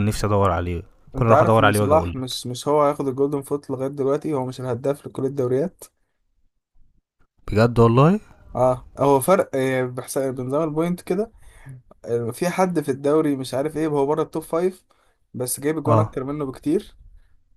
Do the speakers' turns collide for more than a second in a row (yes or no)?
yes